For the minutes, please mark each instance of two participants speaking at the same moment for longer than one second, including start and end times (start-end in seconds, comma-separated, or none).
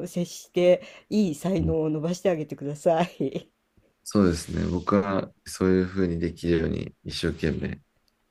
none